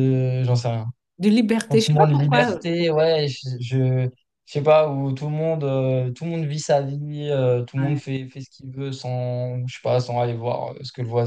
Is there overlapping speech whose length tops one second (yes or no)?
yes